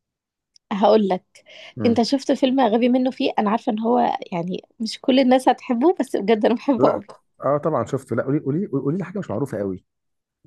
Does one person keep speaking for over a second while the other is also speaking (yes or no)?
no